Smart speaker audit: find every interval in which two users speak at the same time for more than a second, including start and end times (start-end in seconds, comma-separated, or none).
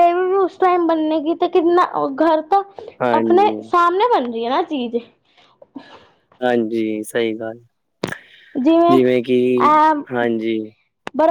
none